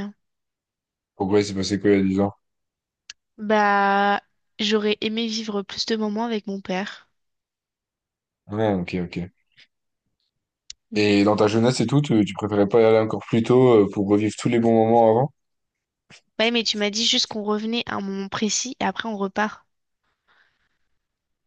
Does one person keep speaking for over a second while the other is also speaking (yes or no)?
no